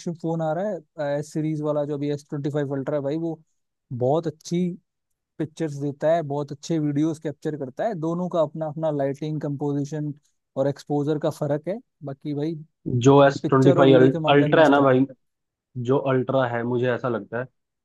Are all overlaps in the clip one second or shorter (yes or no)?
no